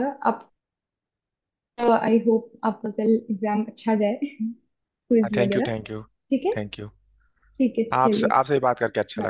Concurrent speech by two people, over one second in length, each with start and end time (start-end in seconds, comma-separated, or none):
none